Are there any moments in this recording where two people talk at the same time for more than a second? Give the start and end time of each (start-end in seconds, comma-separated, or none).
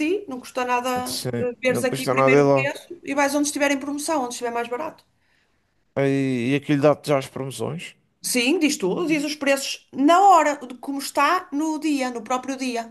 1.1-2.7